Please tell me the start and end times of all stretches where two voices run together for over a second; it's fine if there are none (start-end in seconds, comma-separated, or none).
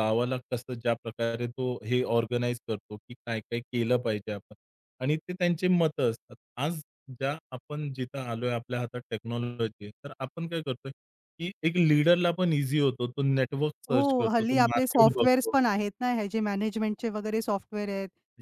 13.9-15.6